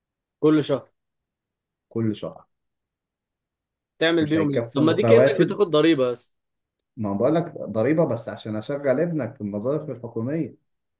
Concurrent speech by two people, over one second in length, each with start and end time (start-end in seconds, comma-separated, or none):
4.2-5.6